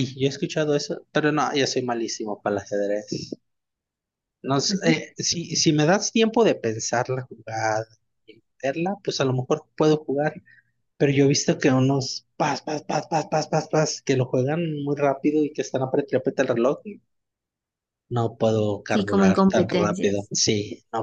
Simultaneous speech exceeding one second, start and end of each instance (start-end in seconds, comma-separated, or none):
18.9-20.3